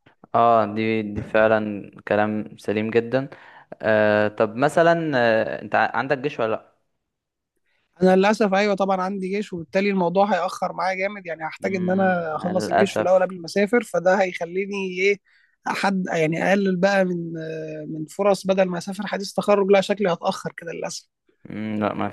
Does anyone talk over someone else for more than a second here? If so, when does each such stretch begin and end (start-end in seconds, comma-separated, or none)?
11.6-13.3